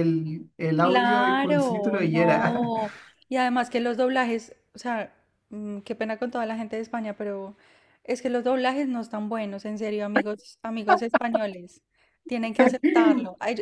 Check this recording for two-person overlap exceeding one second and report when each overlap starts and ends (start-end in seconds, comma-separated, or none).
0.8-2.7